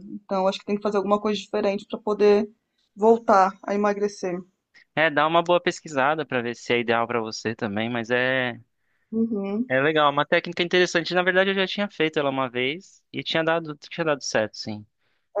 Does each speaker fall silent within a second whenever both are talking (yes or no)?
yes